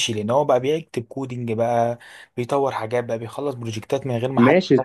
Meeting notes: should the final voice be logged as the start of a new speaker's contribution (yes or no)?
yes